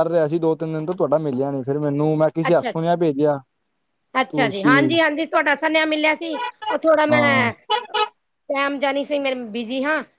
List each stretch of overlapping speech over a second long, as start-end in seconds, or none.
none